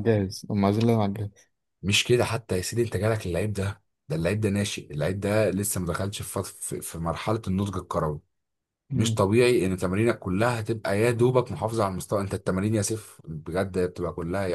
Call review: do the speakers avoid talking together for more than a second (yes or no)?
yes